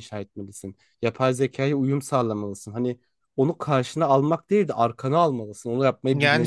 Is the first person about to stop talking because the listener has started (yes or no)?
yes